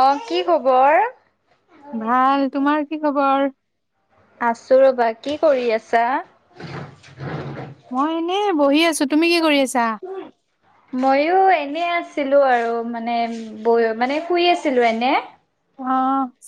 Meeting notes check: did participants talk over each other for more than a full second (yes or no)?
no